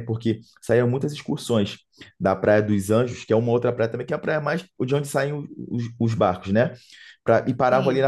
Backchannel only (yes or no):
yes